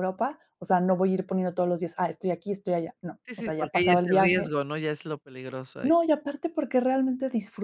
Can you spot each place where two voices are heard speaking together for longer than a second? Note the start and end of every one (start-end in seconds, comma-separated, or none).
3.3-4.5